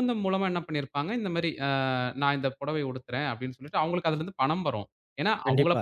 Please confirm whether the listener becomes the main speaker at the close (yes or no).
no